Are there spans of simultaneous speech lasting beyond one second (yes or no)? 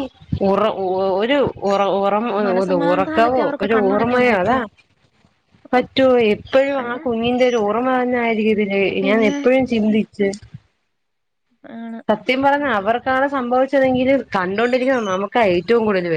yes